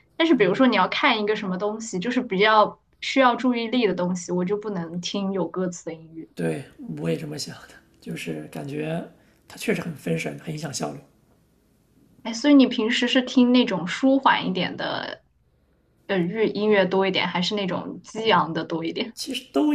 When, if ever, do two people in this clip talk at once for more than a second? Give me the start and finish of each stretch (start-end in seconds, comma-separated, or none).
none